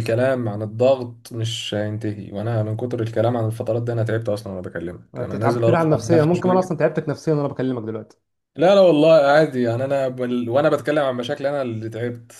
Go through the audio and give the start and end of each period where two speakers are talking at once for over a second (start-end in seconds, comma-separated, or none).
5.1-6.8